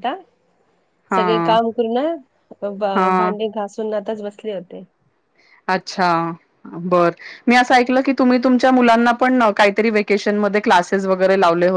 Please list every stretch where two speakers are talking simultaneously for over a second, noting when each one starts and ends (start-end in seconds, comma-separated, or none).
none